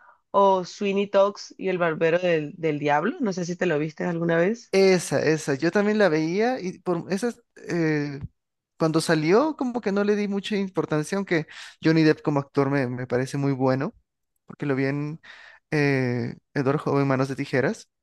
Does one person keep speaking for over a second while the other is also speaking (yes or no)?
no